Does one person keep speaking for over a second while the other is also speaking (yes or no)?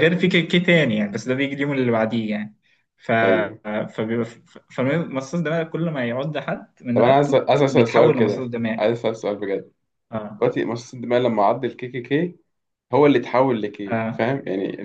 yes